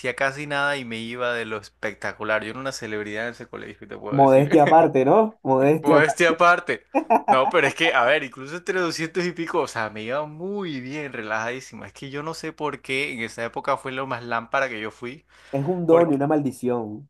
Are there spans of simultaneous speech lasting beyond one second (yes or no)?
no